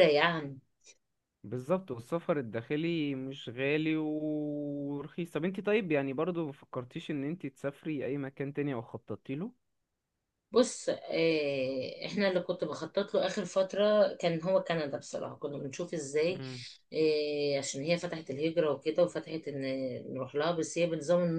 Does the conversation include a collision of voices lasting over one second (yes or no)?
no